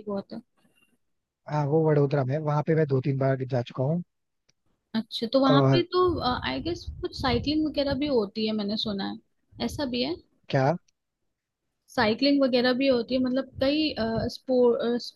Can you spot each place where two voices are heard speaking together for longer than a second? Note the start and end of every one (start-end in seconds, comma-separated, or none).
none